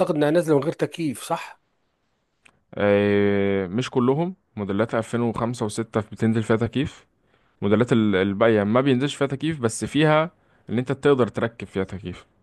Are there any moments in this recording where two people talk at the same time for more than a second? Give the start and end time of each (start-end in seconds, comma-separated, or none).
none